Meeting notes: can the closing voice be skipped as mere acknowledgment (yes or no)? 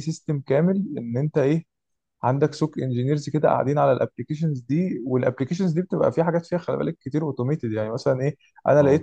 yes